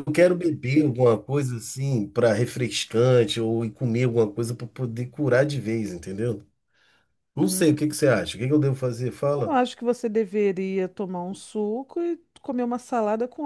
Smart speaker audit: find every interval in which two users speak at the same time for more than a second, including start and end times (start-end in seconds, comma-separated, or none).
none